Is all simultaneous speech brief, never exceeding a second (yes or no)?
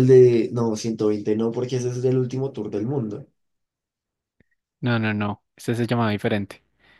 yes